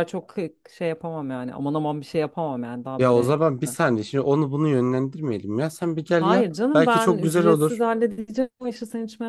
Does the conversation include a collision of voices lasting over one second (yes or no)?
yes